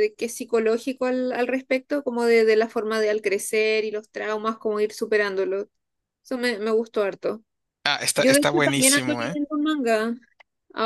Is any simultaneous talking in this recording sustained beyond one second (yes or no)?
yes